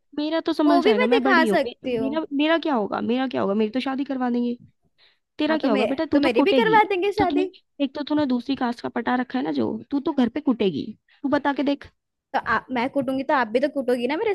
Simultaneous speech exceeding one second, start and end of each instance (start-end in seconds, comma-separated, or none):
0.7-2.1, 5.5-7.5